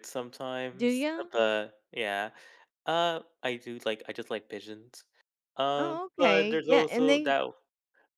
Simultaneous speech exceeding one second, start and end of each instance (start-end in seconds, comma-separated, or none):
5.8-7.3